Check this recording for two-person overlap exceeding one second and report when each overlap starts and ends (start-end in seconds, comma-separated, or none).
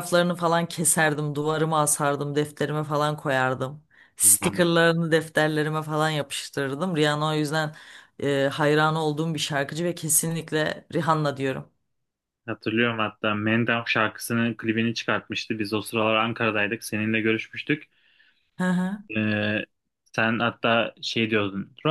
none